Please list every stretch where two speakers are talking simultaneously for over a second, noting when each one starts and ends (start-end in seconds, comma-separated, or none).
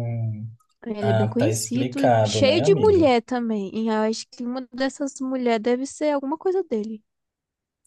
1.0-3.1